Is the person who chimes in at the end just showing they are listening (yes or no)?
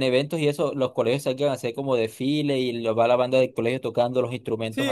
no